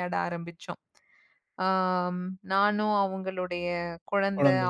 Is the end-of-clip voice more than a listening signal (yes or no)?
no